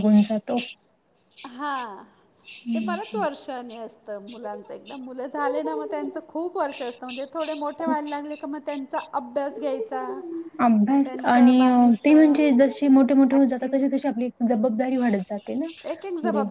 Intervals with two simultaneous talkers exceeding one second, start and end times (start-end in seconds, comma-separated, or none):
10.9-12.4